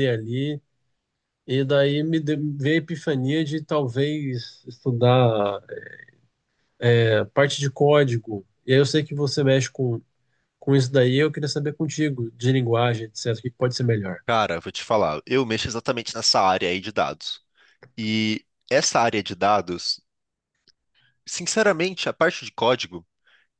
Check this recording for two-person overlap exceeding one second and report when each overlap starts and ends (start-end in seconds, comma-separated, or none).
none